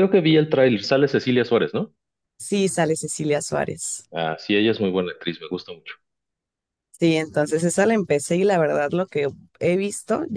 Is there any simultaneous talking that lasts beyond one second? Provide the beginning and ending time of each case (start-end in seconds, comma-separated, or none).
none